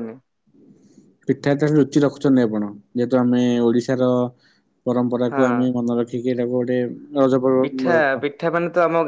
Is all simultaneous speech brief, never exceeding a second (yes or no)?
yes